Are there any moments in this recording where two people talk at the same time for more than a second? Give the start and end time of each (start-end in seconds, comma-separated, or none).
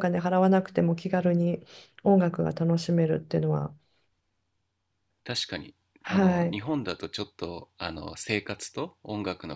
none